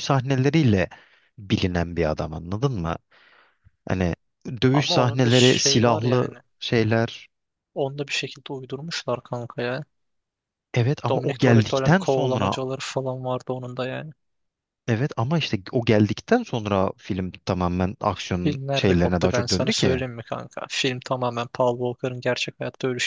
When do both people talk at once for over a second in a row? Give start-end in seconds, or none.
4.7-6.3, 11.1-12.6, 18.4-20.0